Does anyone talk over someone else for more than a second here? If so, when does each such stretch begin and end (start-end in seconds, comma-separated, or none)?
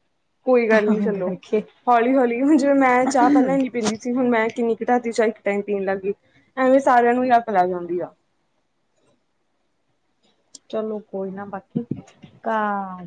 none